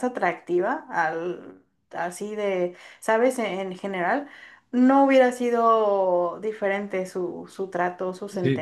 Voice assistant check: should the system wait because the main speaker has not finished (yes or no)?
no